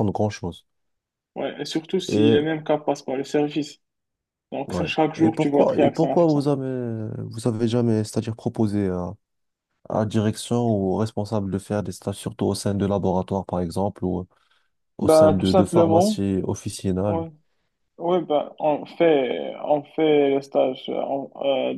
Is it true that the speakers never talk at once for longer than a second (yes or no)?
no